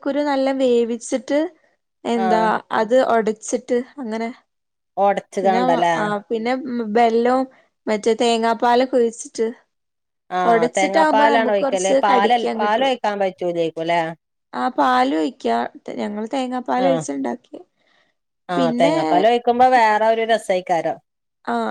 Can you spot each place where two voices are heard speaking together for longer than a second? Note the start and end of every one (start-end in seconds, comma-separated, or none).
10.5-12.9